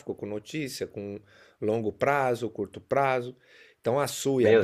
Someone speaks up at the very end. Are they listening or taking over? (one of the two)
listening